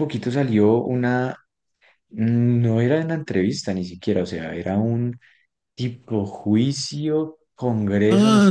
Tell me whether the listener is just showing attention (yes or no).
no